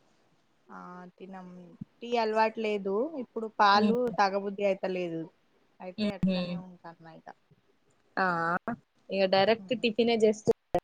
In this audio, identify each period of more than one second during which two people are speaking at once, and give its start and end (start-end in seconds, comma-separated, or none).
none